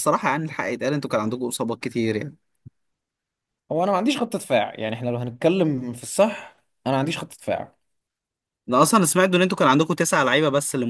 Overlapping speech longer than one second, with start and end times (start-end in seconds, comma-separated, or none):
none